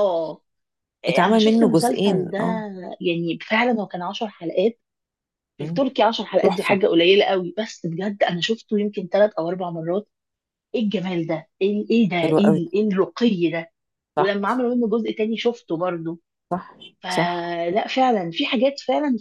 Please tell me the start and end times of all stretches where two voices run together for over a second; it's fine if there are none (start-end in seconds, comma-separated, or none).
1.1-2.4